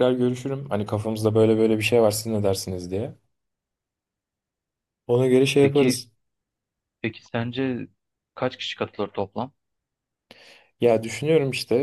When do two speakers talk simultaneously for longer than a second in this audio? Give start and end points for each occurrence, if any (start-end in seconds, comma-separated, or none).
none